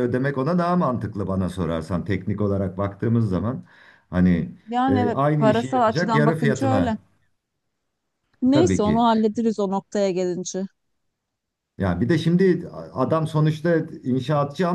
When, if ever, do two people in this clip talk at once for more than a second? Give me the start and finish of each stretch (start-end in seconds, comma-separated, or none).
4.9-7.0